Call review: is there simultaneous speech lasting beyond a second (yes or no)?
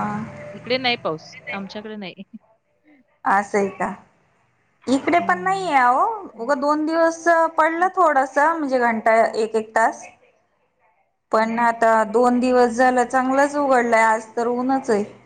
no